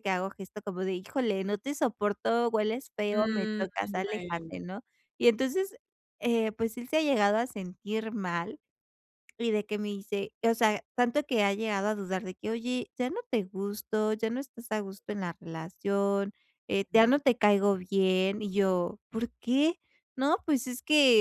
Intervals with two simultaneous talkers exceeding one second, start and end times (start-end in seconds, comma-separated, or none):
3.1-4.5